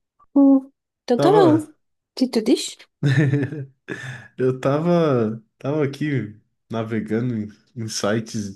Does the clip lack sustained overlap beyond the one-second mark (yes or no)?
yes